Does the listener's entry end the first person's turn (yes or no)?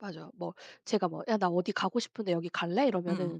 no